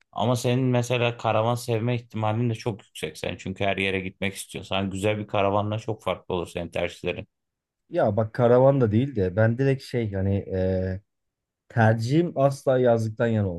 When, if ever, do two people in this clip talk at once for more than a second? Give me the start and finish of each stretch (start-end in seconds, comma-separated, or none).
none